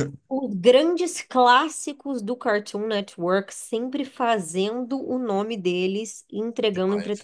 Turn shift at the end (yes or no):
yes